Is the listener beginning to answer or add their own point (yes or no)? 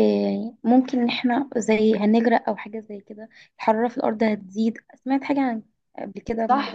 yes